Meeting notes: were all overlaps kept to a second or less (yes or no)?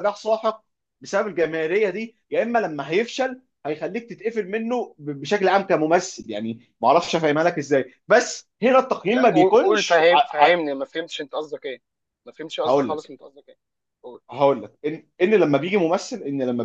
no